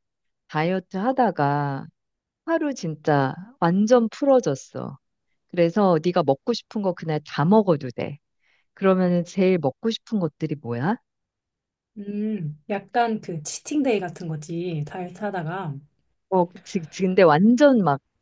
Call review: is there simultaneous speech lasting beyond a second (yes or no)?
no